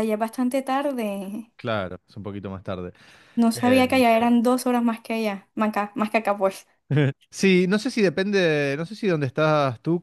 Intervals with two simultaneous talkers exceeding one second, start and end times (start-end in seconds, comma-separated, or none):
none